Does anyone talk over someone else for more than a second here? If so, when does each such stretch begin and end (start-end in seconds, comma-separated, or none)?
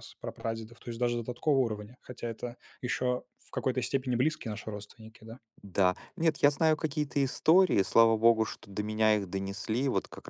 none